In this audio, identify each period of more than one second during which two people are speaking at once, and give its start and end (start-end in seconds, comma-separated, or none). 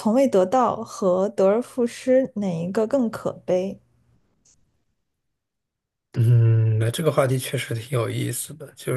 none